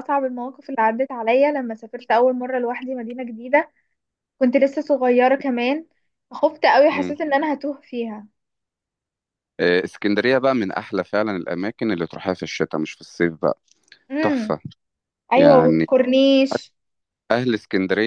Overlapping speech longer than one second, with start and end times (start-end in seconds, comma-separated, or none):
none